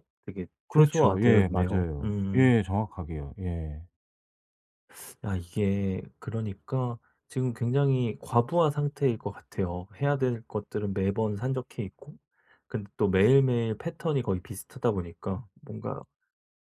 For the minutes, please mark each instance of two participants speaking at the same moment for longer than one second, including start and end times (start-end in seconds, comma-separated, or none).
0.7-2.5